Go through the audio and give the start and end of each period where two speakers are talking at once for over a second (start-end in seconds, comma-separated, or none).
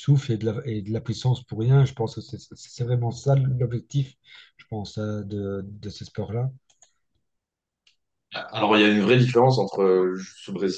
none